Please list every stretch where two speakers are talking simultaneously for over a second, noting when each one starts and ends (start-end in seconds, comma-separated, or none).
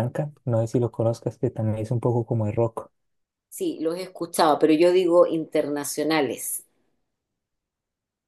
none